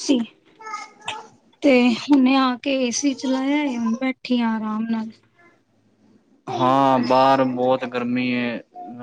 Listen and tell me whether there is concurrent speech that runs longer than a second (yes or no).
no